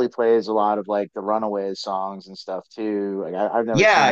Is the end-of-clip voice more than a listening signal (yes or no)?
yes